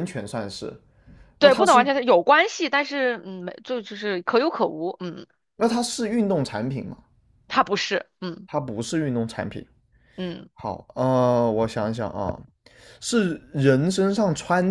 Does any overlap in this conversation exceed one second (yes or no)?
no